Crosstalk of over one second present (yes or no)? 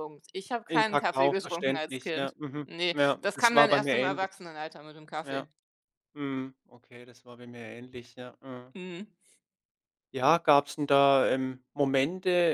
yes